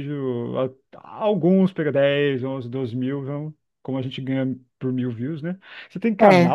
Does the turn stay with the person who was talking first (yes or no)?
yes